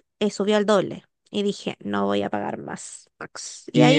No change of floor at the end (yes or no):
no